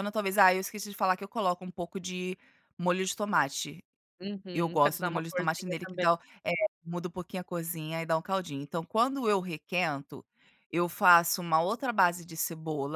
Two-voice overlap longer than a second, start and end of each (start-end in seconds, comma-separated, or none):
4.5-6.0